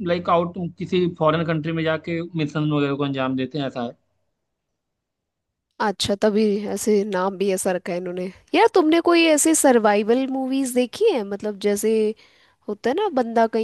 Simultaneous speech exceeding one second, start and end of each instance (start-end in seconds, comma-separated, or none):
none